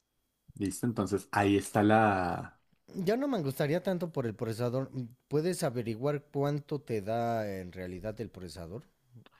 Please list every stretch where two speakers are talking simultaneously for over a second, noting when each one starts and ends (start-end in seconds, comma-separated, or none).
none